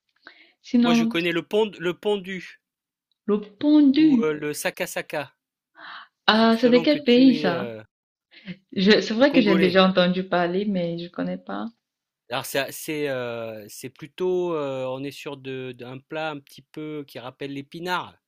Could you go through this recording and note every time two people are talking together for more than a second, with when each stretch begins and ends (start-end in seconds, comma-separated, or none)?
6.3-7.7